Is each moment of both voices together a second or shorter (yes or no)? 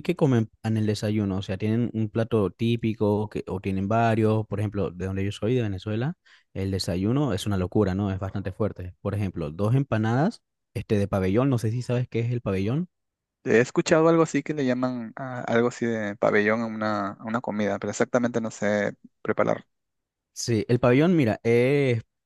yes